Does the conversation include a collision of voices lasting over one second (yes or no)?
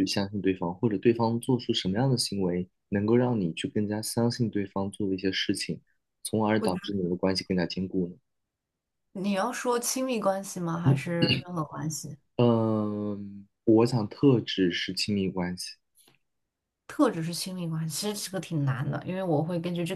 no